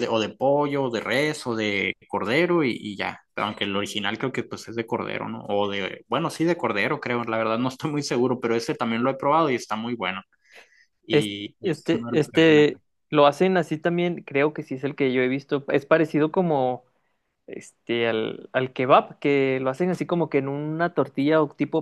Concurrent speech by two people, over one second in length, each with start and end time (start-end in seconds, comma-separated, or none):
11.1-12.7